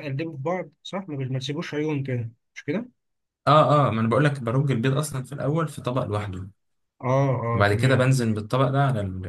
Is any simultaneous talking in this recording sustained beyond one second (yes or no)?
no